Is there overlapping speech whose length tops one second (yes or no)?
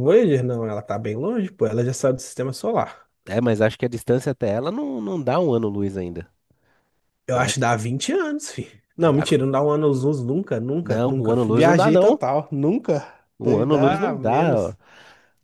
yes